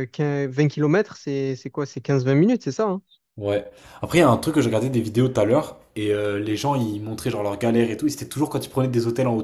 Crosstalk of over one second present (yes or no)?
no